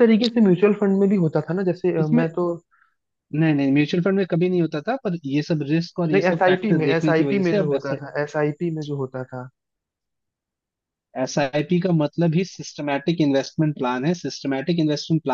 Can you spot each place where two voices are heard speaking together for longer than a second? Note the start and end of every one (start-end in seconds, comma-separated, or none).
6.1-8.0